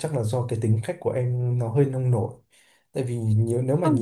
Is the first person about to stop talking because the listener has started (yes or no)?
no